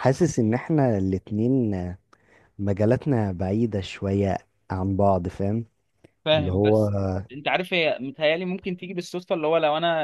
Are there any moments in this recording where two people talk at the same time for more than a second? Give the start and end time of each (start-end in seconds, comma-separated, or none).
none